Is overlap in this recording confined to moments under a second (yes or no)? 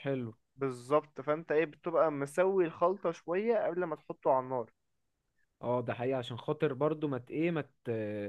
yes